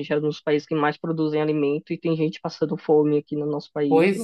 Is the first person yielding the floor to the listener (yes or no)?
yes